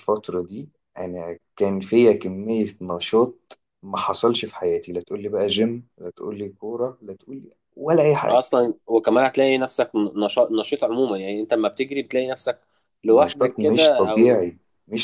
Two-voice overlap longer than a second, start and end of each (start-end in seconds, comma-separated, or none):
13.1-14.4